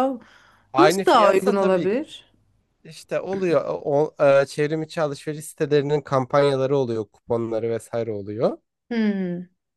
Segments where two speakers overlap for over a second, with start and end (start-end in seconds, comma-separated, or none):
0.8-2.0